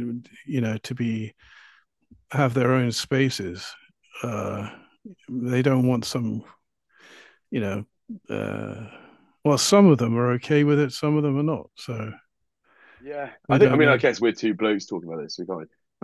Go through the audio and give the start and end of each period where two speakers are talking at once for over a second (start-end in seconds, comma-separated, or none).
none